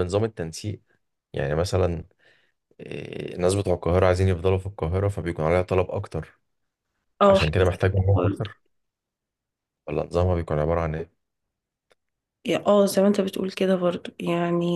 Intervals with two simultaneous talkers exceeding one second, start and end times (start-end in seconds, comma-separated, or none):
7.3-8.6